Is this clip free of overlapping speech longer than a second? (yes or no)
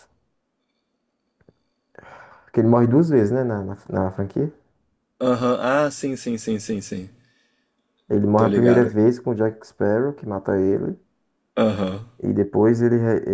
yes